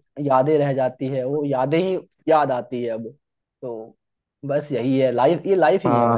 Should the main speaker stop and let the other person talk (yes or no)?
yes